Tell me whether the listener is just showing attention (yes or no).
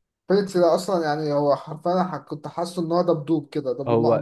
no